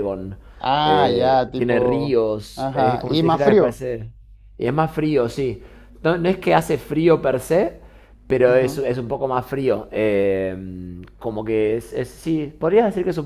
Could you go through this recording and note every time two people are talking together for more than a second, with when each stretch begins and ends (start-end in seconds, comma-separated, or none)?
0.8-3.8